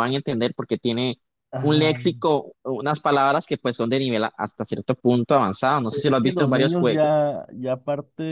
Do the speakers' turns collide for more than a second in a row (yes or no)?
yes